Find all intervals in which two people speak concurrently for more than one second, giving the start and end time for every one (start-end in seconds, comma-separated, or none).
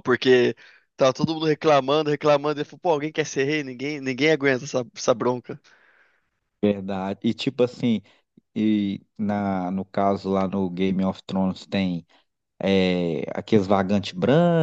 none